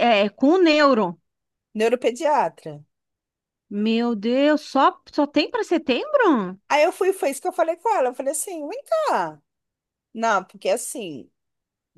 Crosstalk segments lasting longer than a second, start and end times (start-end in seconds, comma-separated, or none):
none